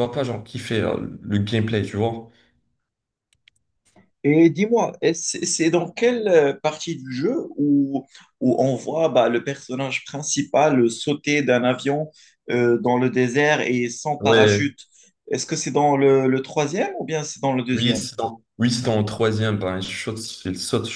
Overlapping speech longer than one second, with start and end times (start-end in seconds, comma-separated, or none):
none